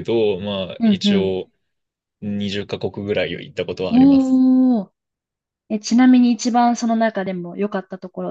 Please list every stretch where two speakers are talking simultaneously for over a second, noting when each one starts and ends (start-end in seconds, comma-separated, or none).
none